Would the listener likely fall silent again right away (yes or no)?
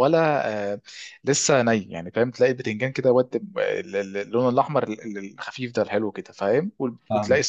yes